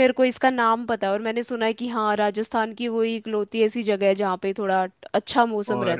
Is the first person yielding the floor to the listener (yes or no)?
yes